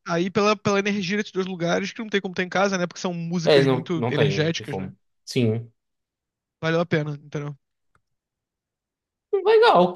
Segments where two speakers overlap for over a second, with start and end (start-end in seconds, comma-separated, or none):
3.5-4.9